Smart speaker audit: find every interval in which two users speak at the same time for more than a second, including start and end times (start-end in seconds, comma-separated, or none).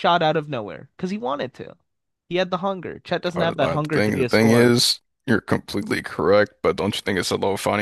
3.4-4.8